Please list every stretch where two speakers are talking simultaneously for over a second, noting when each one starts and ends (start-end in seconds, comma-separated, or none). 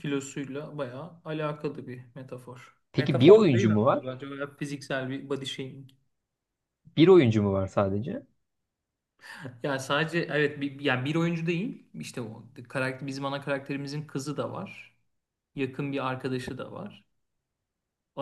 2.9-4.2